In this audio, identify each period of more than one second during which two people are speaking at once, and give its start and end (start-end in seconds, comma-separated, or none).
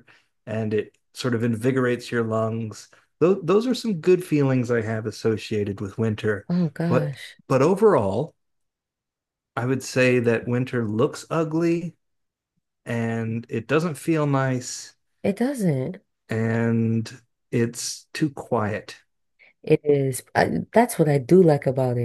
none